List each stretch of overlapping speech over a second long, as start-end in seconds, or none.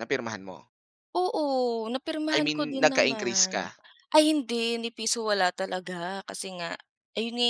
2.3-3.7